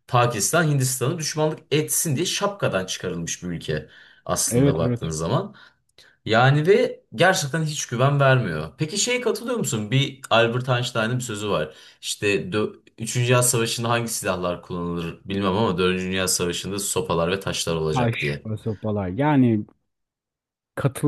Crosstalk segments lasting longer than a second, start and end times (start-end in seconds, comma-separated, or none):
none